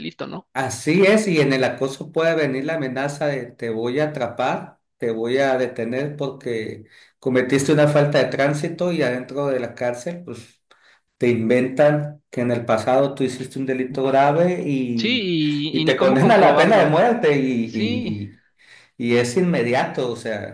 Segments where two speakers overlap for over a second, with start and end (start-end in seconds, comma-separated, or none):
14.9-17.0